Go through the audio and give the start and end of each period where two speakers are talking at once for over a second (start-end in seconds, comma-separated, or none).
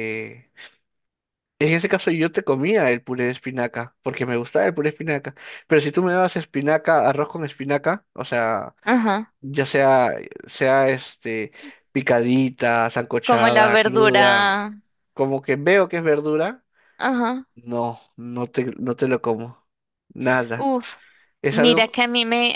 13.2-14.5